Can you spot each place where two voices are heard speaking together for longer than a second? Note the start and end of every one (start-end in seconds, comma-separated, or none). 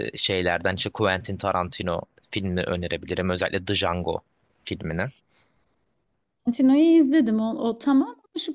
none